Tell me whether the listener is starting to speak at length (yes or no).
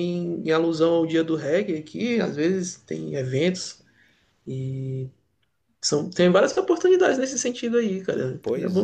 yes